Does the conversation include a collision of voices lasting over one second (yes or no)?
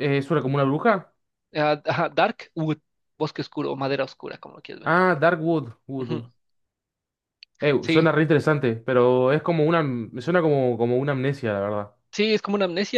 no